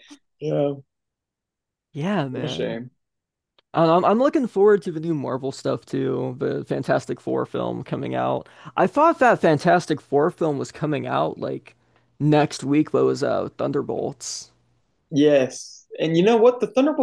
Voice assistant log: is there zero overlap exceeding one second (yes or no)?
yes